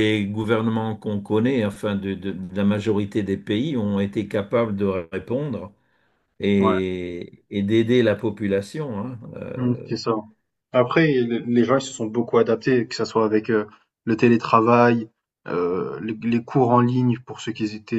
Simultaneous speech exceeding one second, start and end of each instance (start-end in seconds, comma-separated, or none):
none